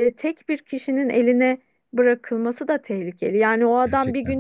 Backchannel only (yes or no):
yes